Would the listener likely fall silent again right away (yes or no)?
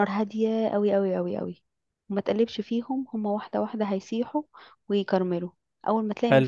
yes